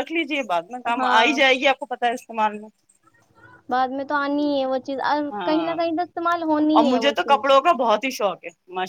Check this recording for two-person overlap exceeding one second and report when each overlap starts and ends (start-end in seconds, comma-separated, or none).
none